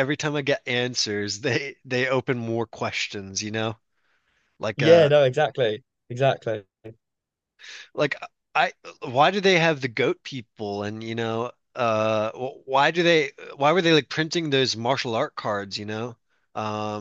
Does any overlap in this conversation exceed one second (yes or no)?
no